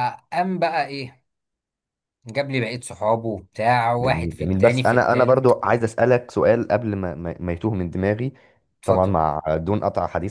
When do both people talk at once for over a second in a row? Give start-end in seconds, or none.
4.0-5.6